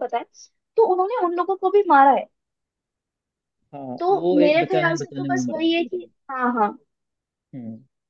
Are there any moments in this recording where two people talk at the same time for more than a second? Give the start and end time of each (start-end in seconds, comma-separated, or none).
4.0-6.1